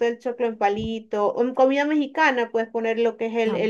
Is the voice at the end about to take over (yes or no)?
no